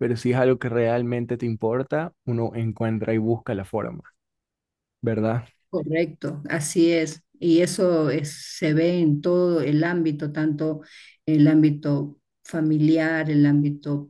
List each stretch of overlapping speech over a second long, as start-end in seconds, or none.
none